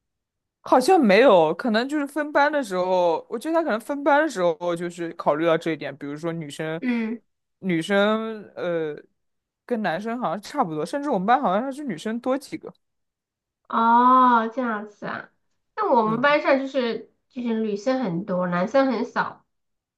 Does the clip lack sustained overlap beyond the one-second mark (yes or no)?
yes